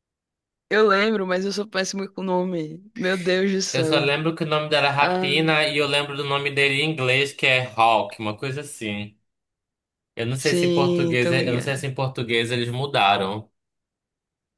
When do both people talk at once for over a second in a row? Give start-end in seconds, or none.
10.3-11.9